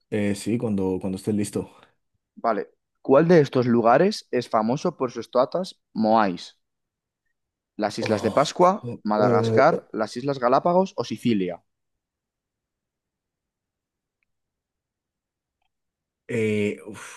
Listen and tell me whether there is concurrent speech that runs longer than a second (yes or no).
yes